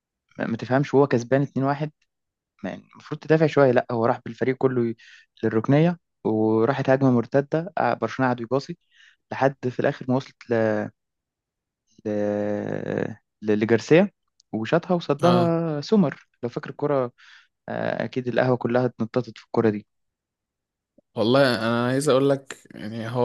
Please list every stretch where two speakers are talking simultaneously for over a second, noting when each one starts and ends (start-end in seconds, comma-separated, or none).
none